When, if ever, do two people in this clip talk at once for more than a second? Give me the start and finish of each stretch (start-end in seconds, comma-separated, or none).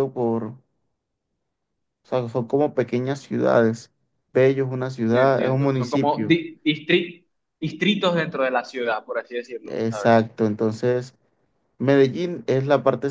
5.1-6.4